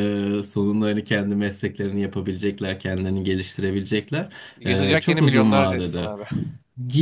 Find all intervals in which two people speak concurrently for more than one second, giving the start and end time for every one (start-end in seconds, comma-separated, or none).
4.7-6.1